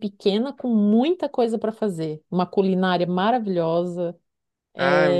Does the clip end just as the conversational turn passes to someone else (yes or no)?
no